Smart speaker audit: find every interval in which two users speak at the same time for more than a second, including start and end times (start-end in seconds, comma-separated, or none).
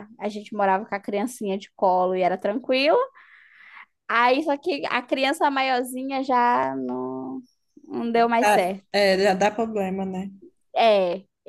none